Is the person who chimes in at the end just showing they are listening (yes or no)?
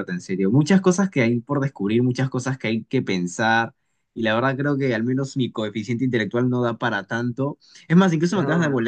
yes